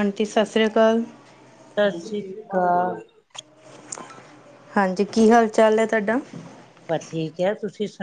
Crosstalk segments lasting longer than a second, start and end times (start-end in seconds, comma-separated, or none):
none